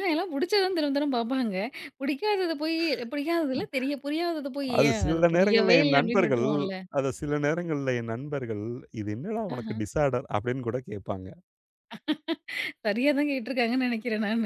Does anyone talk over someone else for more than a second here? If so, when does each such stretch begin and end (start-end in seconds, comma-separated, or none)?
4.8-6.4